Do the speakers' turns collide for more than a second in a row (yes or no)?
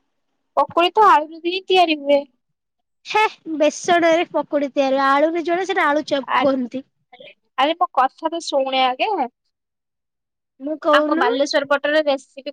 no